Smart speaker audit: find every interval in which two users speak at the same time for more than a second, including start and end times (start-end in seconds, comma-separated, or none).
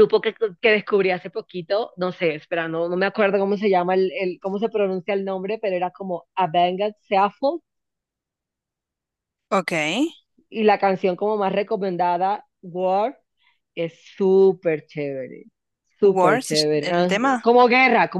16.0-17.5